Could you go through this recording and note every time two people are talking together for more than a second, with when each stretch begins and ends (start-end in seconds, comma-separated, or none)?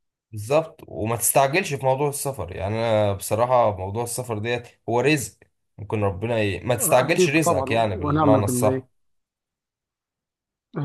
7.0-8.8